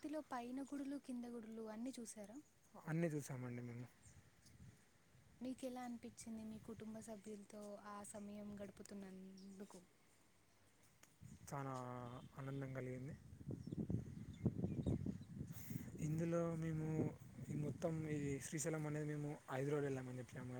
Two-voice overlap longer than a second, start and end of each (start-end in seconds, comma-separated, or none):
none